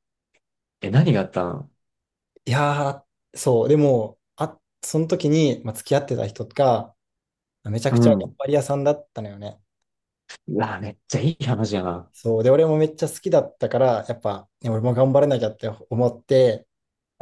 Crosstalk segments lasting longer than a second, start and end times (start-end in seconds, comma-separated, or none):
none